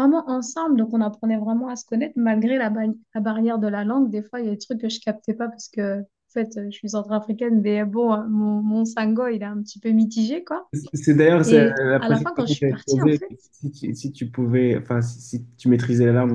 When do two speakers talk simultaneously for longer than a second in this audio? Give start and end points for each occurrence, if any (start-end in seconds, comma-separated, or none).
11.4-13.3